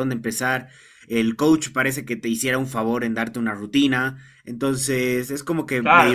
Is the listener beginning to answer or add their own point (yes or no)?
yes